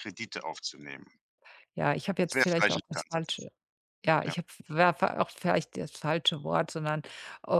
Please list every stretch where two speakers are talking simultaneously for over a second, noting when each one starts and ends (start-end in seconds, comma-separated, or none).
2.2-3.5